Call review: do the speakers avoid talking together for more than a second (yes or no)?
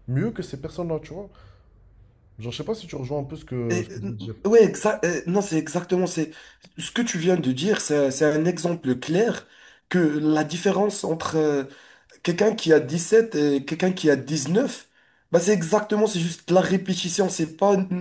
yes